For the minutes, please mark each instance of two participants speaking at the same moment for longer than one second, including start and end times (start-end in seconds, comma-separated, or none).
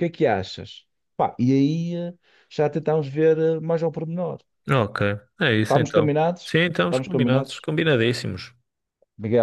5.6-7.7